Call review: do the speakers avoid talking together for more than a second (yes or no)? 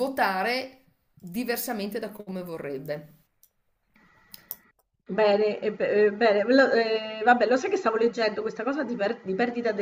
yes